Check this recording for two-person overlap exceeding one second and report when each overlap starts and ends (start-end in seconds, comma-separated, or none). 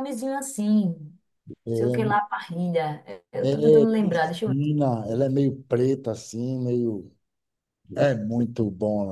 3.4-4.6